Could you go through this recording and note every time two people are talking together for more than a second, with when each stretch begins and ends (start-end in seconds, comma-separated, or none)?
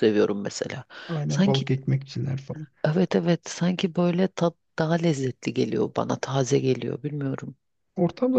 none